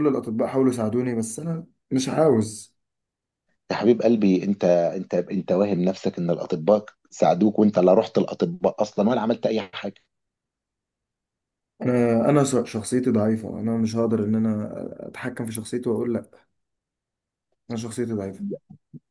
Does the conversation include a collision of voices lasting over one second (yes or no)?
no